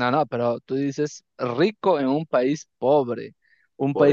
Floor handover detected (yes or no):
no